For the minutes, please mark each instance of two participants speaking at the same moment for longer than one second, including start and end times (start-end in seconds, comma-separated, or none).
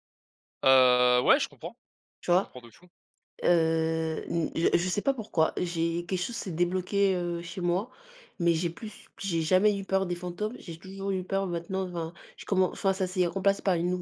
none